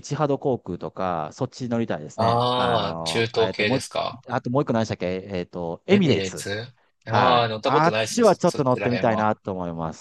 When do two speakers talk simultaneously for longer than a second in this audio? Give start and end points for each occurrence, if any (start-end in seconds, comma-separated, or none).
2.2-3.8, 7.1-9.3